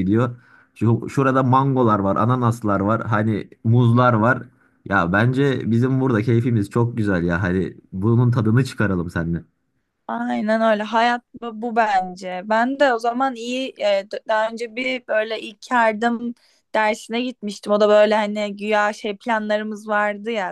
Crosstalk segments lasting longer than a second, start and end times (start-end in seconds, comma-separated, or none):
none